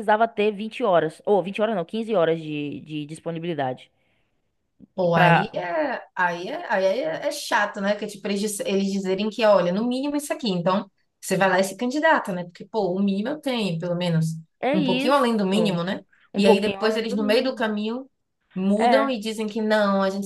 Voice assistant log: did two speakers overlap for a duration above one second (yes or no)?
yes